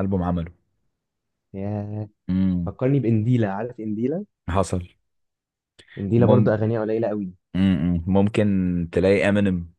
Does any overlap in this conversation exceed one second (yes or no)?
no